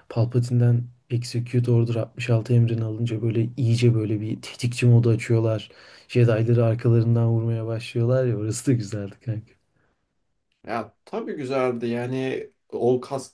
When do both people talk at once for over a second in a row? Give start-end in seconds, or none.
none